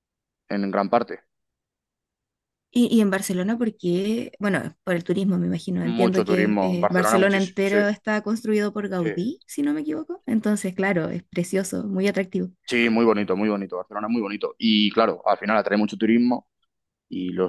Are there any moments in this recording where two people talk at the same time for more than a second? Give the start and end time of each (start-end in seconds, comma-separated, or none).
5.8-7.8